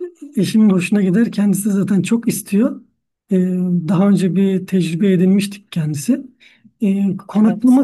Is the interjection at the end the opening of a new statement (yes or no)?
no